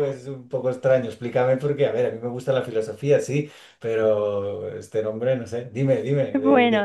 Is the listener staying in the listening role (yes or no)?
no